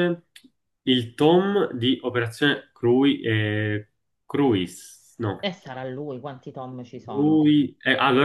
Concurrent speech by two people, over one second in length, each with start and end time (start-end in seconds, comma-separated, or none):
none